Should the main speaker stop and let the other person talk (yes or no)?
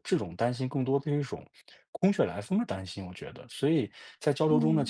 no